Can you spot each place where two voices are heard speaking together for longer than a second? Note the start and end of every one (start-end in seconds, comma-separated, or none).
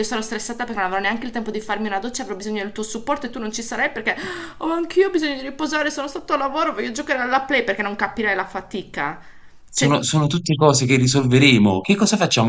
none